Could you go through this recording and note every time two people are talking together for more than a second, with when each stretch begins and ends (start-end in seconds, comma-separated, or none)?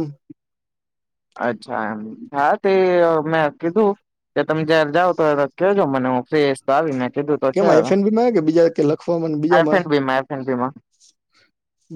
none